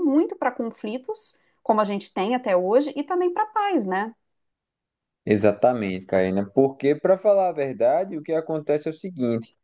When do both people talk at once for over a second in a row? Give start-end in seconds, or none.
none